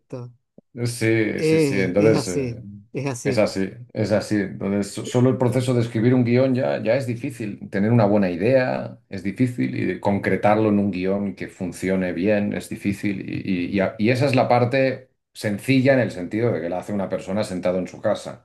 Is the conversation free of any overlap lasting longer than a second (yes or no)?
no